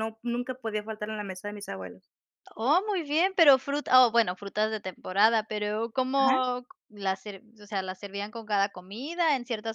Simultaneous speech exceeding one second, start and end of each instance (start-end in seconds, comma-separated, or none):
none